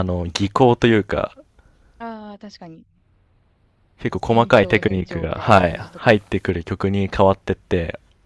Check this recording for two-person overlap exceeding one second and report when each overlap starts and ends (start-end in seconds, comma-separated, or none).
4.2-6.2